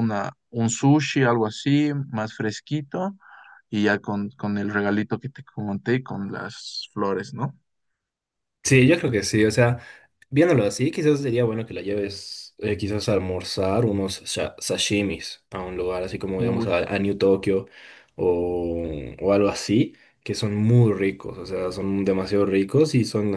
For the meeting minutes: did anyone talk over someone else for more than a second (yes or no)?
no